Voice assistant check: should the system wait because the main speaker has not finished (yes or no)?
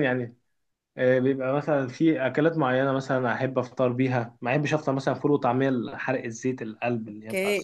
no